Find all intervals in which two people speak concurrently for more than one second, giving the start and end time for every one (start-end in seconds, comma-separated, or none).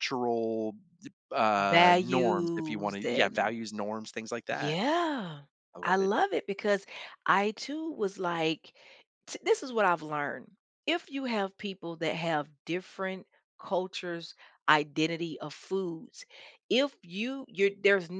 1.6-3.5